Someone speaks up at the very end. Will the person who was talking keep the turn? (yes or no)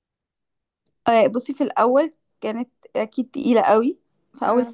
yes